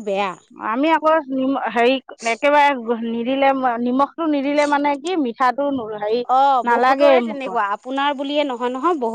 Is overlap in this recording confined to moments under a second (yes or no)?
yes